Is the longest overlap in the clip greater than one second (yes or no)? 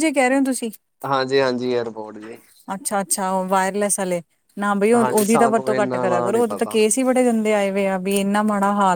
yes